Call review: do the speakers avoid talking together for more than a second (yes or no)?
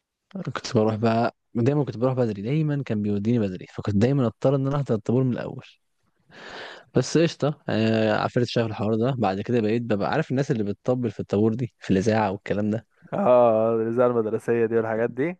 yes